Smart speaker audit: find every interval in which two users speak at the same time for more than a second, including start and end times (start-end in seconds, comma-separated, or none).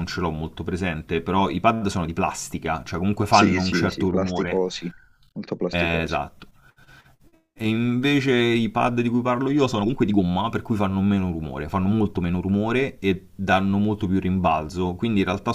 3.3-4.6